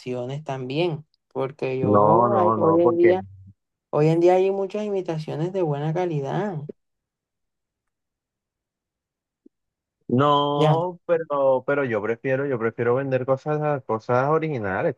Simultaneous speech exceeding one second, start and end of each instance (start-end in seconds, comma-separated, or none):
1.8-3.1